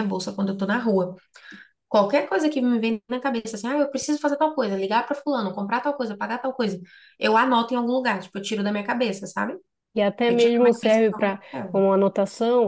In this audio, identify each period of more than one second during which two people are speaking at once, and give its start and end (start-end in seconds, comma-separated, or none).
10.3-11.8